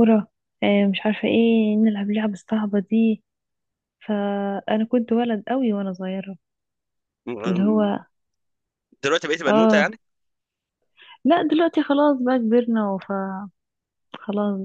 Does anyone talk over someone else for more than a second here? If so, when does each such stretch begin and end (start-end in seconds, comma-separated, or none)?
none